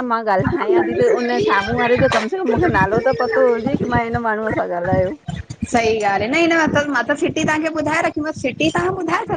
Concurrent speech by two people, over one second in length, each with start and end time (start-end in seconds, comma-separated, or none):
none